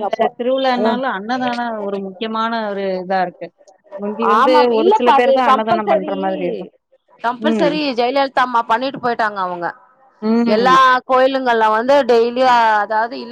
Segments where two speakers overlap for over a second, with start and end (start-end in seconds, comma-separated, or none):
4.4-6.1